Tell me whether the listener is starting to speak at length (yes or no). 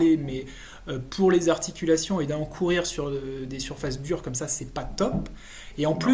no